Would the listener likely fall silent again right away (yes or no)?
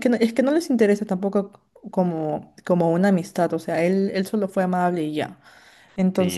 no